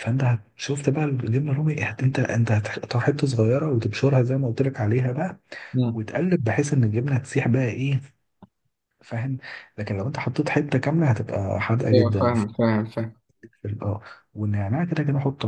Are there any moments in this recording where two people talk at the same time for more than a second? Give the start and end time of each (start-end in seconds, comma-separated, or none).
none